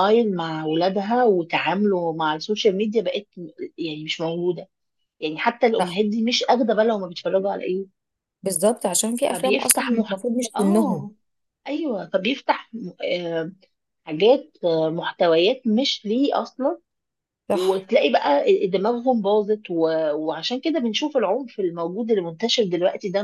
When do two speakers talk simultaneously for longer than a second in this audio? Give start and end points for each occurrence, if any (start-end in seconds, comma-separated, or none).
9.3-11.1